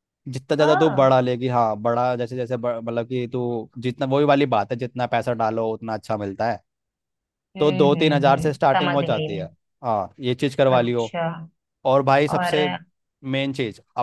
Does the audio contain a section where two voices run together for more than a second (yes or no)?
yes